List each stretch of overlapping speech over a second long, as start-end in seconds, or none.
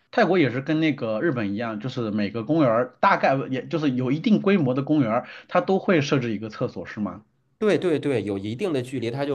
none